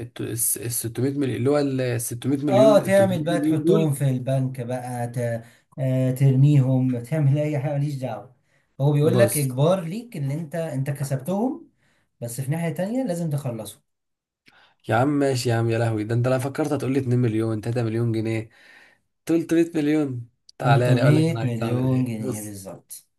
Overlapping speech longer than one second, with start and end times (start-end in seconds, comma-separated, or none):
2.5-3.9, 20.6-22.6